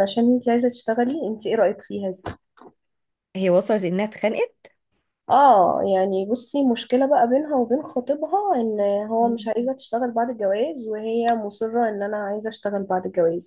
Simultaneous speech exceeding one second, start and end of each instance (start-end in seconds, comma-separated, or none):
none